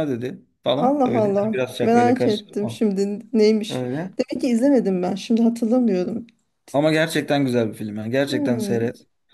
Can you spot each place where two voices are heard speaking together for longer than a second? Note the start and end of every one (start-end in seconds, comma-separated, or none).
0.8-2.8